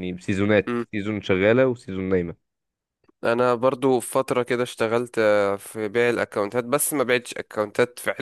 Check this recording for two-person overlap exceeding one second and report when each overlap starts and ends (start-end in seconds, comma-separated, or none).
none